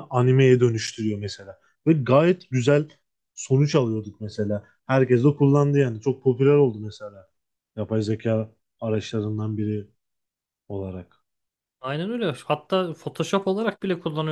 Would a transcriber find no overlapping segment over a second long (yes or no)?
yes